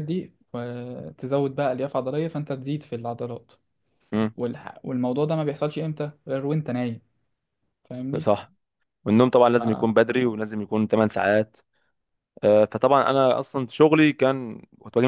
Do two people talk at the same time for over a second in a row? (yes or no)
no